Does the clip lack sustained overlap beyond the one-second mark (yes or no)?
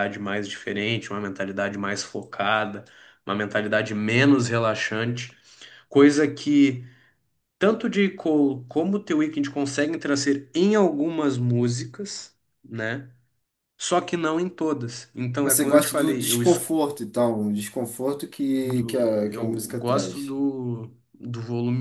no